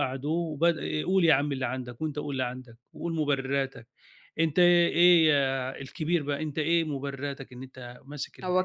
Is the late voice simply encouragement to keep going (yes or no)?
no